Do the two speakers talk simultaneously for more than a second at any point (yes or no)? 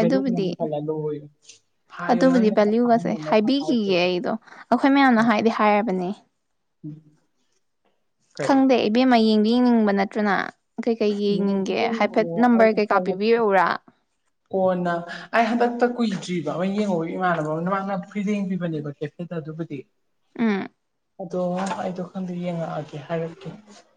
yes